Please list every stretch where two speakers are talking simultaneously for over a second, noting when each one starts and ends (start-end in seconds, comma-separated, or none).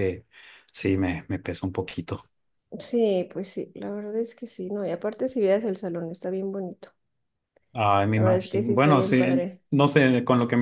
8.1-9.6